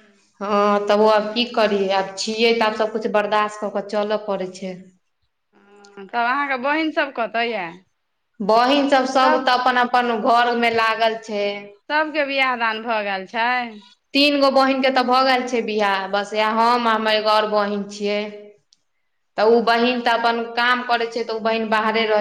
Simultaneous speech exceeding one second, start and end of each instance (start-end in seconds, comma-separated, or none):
none